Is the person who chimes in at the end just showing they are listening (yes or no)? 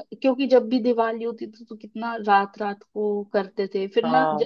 yes